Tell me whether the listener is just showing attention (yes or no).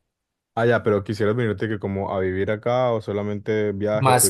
no